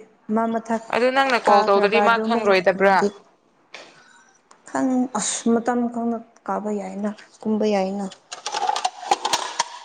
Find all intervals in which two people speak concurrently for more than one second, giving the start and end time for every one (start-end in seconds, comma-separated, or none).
1.5-3.0